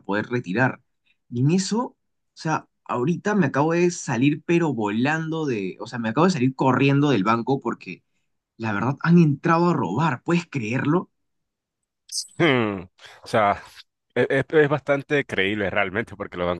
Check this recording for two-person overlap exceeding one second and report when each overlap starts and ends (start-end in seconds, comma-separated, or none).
none